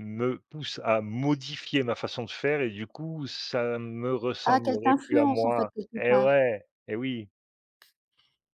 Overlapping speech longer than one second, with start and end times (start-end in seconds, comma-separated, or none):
4.4-6.4